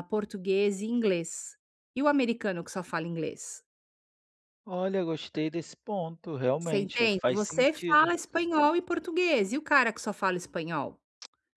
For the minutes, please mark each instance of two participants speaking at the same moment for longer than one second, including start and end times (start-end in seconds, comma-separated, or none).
6.6-8.1